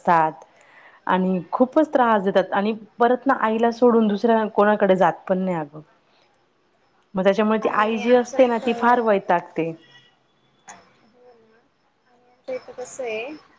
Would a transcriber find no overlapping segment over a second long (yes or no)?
no